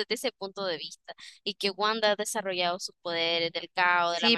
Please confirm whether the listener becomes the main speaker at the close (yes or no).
yes